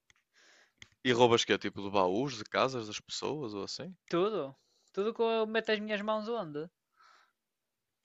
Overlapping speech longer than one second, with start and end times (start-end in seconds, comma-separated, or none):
none